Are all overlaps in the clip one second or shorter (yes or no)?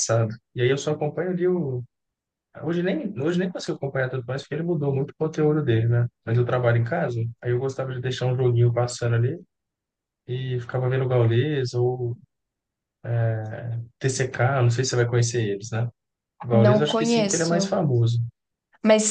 no